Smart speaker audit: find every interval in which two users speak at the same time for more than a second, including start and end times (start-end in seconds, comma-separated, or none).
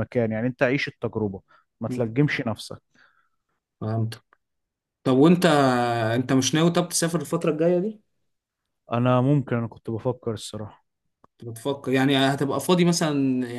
none